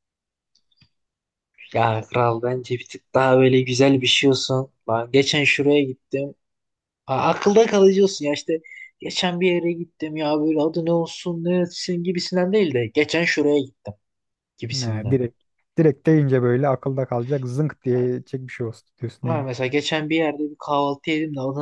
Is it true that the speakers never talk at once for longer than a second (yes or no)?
yes